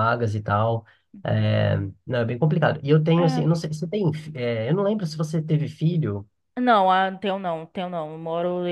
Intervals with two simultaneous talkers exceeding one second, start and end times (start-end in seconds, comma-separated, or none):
none